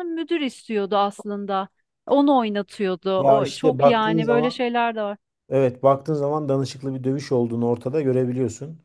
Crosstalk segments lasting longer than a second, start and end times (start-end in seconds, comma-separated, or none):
3.2-4.6